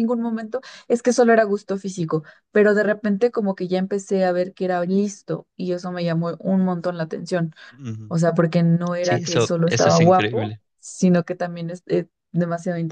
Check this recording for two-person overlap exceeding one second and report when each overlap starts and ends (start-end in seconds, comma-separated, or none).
9.0-10.6